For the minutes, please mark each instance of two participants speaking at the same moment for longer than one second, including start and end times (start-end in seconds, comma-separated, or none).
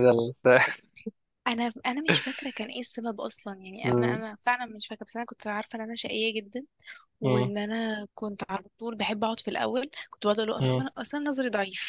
none